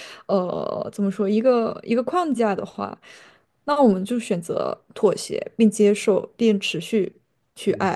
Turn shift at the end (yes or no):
yes